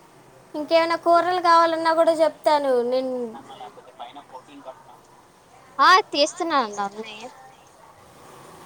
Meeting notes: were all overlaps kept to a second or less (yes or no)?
yes